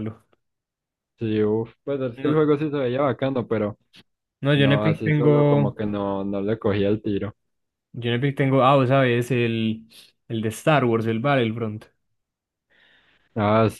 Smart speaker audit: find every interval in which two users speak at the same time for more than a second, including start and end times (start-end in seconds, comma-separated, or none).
4.5-5.8